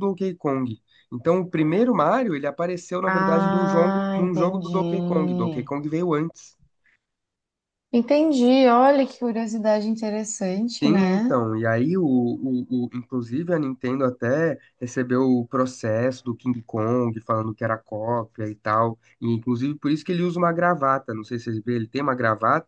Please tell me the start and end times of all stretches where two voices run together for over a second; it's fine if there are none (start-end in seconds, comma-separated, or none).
3.0-5.7